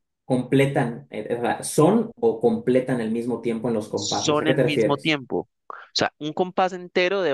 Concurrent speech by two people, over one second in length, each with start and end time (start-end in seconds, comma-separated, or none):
3.9-5.2